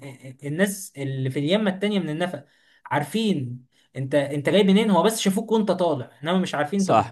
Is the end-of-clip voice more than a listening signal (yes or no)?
yes